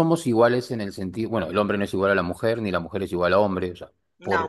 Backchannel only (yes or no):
yes